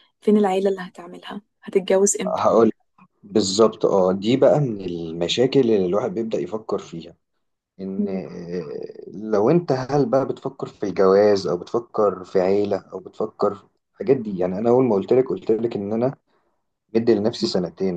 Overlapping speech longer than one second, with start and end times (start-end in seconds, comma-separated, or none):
none